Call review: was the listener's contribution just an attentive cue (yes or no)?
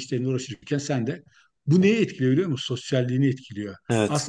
yes